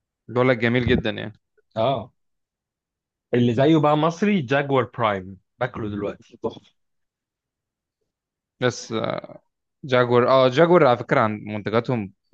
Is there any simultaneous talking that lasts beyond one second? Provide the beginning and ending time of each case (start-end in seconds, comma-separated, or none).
none